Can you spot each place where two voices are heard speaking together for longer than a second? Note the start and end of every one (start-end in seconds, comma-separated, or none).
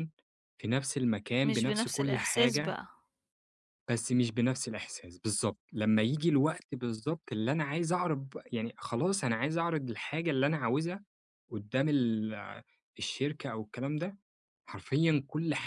1.4-2.8